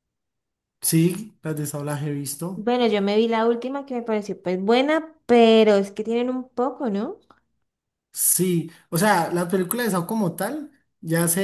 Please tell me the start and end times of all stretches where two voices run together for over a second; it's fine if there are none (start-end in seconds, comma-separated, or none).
none